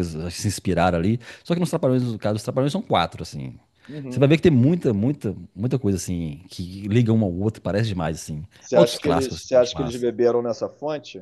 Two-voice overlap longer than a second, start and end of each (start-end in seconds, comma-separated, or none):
8.6-10.1